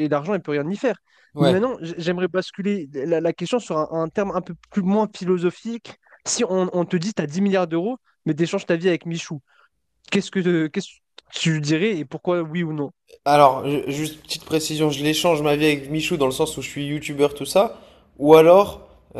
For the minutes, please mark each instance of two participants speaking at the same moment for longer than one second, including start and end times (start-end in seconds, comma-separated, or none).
none